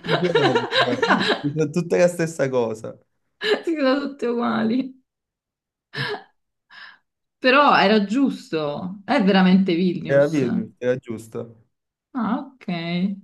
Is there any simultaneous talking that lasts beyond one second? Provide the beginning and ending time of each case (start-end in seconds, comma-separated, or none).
none